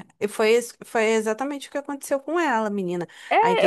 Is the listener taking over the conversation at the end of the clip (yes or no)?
yes